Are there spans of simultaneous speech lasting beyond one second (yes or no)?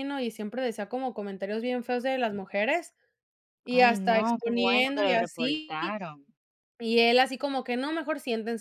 yes